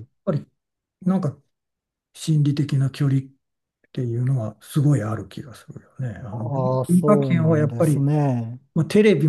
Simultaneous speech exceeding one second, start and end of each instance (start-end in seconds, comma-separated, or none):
6.3-8.1